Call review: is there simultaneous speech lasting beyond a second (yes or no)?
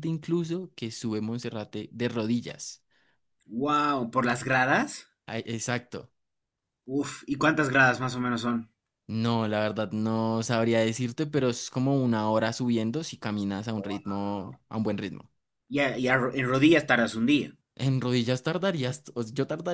no